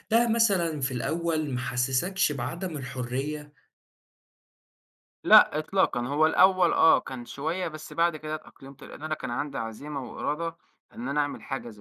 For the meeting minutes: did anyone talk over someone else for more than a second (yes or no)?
no